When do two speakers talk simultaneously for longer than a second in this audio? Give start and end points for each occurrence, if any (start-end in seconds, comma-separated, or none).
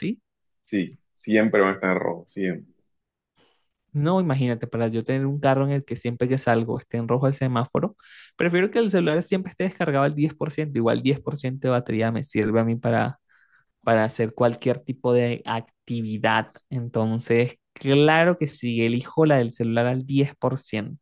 none